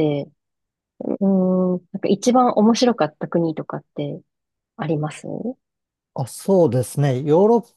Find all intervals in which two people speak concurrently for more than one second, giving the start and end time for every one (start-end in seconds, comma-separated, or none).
none